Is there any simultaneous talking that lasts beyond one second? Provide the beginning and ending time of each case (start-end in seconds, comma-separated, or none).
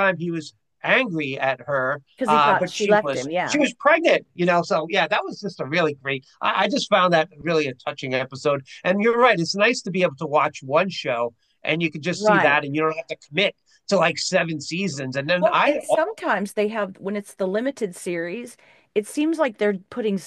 2.2-3.6